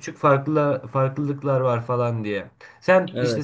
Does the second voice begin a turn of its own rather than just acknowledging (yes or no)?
no